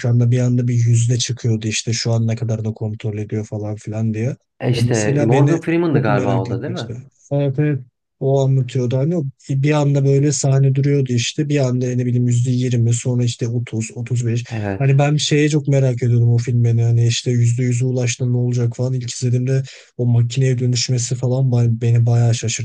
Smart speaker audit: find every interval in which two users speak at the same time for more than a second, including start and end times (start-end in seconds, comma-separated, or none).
4.7-6.9